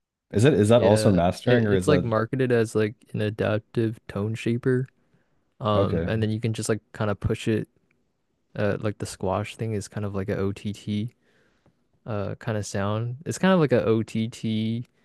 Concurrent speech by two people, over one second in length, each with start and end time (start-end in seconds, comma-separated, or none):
0.7-2.1